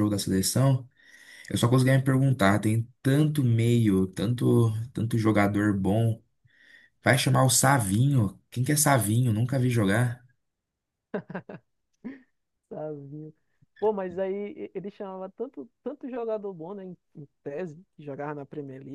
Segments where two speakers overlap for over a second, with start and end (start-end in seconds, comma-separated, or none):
none